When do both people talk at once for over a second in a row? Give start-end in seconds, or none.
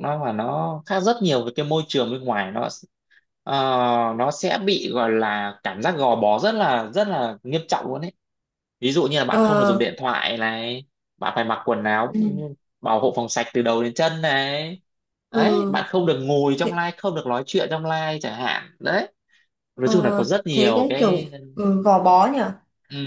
19.8-21.3